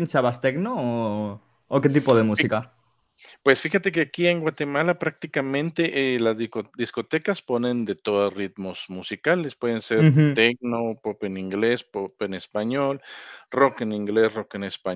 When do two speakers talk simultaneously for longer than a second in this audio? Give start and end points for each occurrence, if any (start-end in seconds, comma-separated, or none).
none